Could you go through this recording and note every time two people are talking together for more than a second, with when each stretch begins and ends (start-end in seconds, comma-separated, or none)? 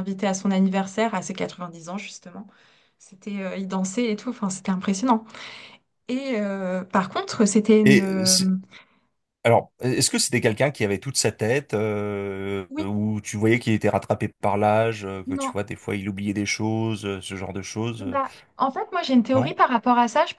none